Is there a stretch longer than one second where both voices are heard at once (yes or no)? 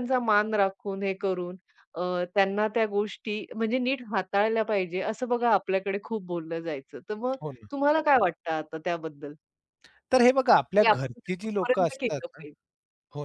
yes